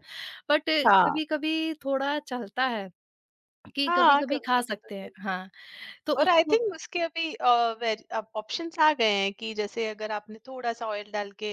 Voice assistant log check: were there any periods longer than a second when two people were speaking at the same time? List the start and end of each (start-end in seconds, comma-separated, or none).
3.9-5.4